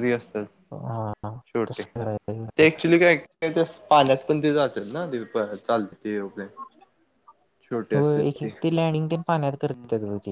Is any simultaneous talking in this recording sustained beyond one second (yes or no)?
no